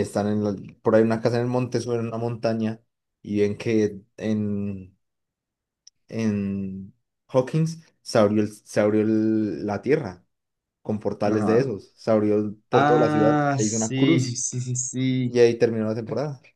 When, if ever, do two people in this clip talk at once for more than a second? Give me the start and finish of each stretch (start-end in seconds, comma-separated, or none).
12.7-14.4